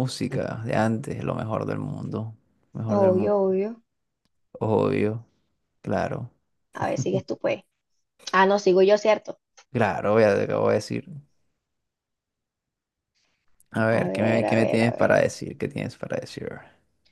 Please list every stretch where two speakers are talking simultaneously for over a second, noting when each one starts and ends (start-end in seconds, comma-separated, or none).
13.9-15.2